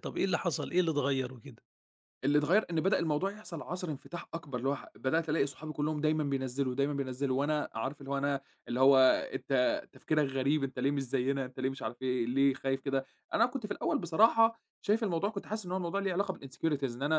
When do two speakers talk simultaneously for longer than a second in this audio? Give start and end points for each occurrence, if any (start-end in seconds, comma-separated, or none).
none